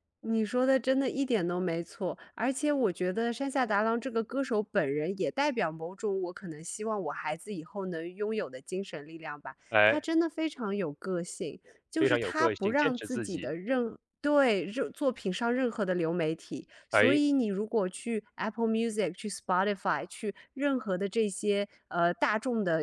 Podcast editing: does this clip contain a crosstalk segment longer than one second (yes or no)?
yes